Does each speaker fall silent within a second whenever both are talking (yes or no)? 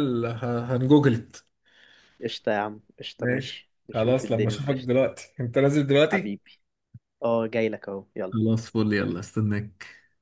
no